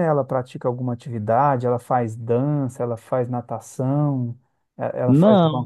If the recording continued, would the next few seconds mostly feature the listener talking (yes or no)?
no